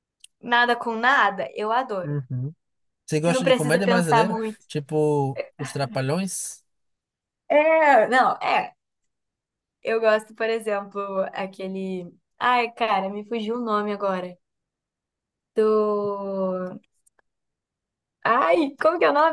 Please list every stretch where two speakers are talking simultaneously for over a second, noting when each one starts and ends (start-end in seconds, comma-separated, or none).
3.2-4.6